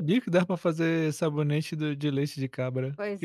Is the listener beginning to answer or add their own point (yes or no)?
yes